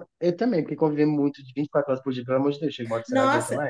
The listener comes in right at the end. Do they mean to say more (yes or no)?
yes